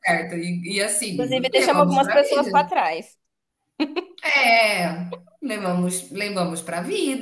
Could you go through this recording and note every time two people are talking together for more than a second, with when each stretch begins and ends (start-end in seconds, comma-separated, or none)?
1.2-2.7